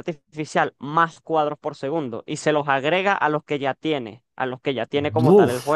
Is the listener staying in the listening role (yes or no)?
yes